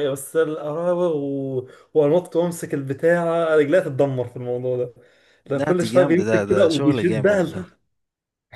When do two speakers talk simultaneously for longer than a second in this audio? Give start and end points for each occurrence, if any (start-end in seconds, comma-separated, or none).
5.5-7.7